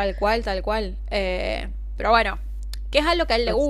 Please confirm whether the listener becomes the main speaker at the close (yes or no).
no